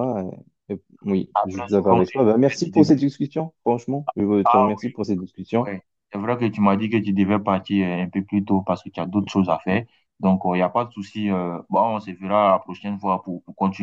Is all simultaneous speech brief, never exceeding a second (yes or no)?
no